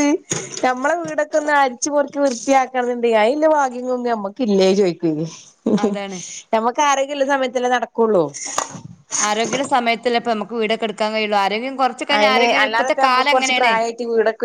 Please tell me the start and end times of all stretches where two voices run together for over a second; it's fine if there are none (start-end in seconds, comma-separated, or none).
12.2-13.7